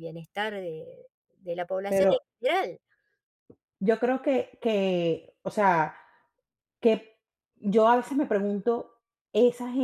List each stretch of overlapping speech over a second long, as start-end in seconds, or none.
none